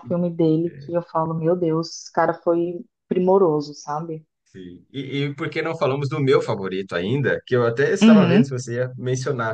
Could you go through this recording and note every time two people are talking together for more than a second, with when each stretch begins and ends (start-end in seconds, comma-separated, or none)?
none